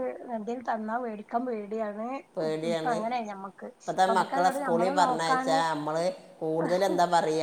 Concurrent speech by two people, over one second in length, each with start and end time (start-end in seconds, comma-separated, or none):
4.1-5.6